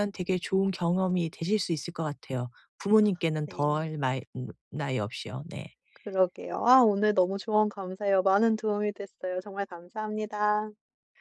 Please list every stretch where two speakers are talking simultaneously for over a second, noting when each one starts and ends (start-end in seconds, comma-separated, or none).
none